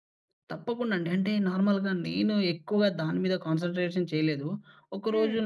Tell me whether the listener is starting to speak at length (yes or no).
no